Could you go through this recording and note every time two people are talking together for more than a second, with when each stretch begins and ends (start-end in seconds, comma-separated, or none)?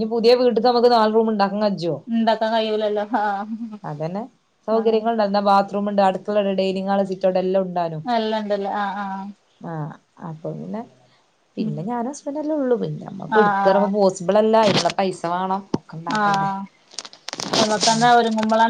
none